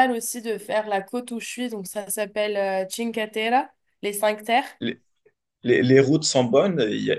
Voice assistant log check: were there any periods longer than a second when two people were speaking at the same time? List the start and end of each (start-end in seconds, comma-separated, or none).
none